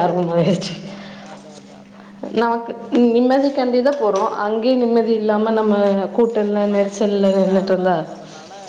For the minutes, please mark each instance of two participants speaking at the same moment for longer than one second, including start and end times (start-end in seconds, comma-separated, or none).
6.6-8.0